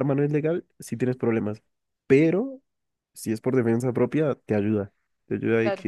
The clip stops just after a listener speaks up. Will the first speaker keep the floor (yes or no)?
yes